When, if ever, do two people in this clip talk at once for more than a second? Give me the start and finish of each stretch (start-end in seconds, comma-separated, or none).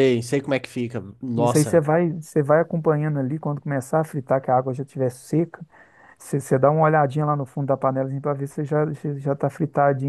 none